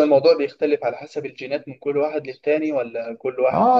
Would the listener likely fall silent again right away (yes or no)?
no